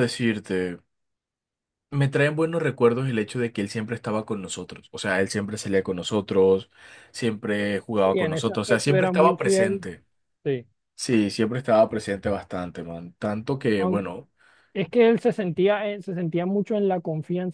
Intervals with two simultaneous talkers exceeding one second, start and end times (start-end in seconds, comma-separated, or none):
8.1-9.8